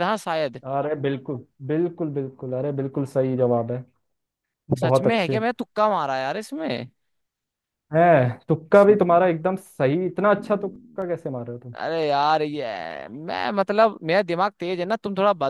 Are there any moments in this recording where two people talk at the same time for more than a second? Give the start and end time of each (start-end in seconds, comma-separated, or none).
none